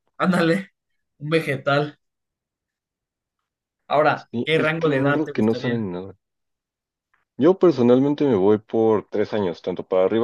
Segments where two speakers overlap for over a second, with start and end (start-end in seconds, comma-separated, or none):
4.2-5.9